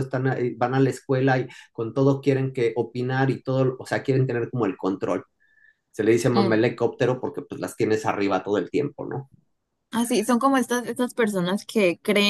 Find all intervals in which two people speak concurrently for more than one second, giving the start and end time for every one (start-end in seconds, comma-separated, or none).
none